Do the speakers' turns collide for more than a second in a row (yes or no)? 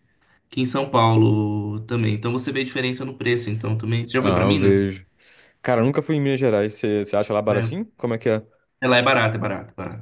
no